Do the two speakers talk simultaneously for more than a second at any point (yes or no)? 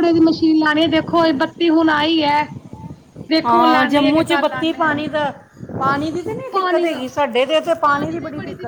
yes